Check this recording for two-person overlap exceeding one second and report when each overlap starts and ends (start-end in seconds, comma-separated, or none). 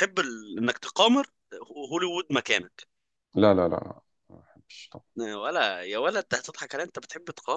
none